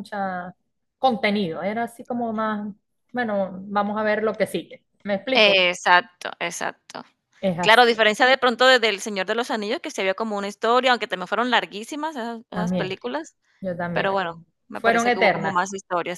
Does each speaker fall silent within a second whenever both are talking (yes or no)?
no